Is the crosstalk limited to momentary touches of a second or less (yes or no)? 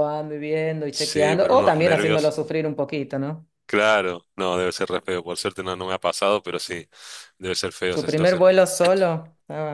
no